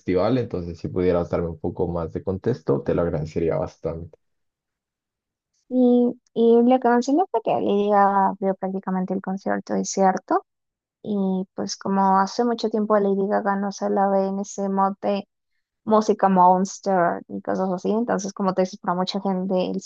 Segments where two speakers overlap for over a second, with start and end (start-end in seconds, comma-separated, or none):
none